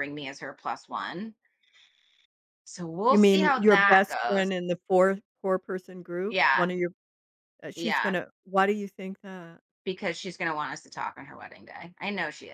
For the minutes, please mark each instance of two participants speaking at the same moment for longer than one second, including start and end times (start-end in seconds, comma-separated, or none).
3.1-4.5